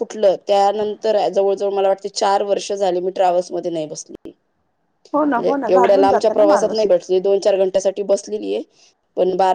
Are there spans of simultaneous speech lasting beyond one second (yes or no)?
yes